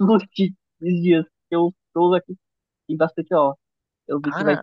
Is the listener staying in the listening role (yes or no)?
yes